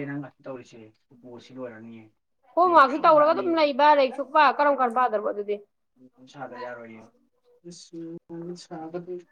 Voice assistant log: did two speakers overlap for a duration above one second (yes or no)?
no